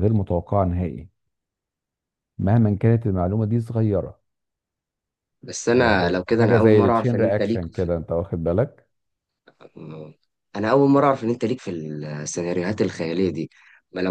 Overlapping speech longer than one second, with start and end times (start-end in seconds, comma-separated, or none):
5.7-7.6